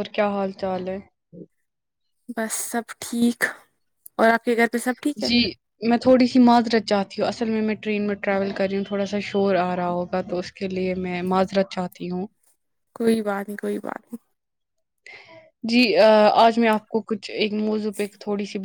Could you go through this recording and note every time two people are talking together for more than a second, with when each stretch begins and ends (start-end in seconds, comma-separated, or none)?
none